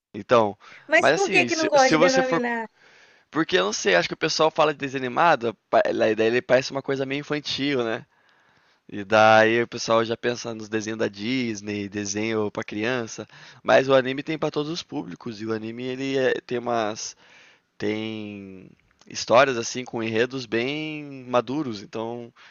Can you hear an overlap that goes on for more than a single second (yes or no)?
yes